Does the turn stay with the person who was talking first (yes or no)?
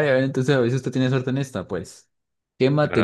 yes